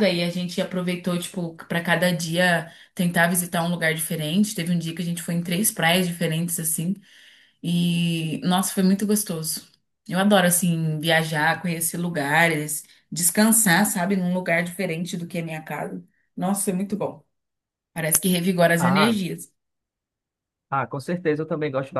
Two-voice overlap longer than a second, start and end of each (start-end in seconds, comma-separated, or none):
none